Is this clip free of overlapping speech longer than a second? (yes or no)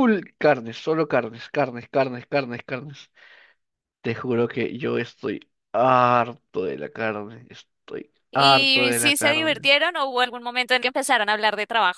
no